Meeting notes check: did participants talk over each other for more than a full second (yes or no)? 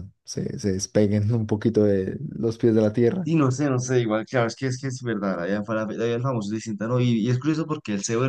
no